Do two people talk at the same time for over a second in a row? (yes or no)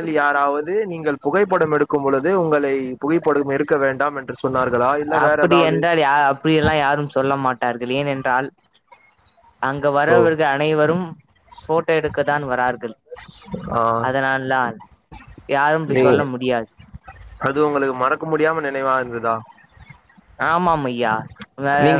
no